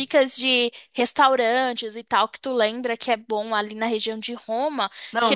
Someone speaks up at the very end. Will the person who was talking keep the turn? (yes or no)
yes